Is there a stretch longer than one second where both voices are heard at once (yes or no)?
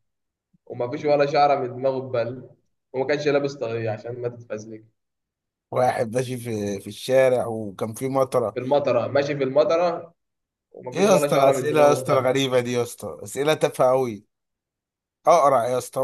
yes